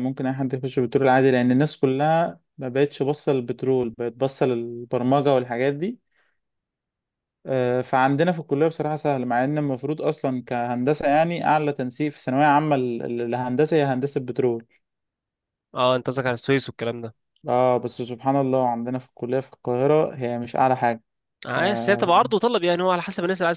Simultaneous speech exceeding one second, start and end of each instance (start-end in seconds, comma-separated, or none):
none